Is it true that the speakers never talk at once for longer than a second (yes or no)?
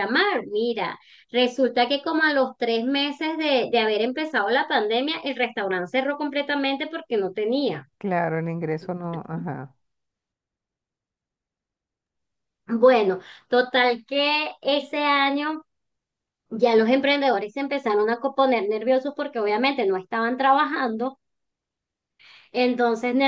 yes